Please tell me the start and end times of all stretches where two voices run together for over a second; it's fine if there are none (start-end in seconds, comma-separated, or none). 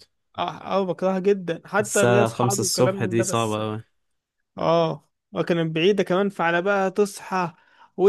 1.8-3.6